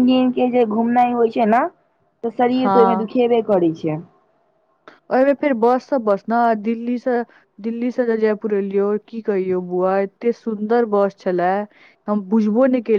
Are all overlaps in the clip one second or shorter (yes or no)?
yes